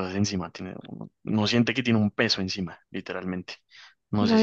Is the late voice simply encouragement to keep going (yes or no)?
no